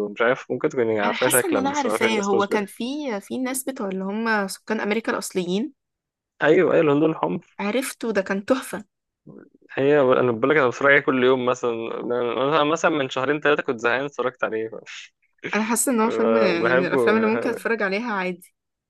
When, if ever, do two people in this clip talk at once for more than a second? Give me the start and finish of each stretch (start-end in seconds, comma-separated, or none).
1.0-2.7